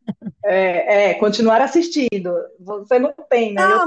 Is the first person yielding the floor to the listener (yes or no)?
yes